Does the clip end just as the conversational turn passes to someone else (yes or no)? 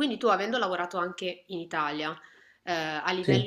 no